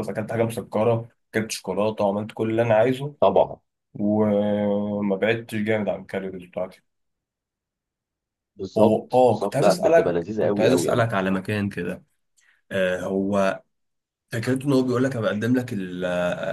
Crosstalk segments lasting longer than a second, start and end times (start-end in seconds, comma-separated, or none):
8.8-11.1